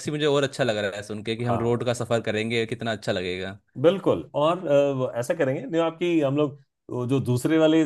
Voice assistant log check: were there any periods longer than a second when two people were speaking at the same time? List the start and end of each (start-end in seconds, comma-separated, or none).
none